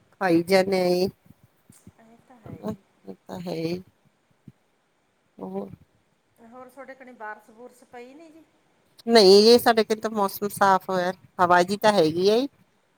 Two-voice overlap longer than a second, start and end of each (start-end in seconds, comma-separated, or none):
none